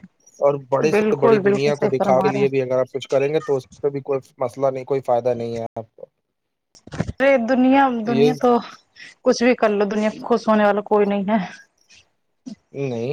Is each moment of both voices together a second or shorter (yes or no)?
no